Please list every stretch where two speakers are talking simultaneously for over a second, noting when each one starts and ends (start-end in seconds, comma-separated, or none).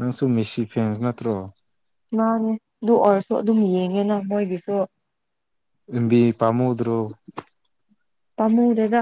none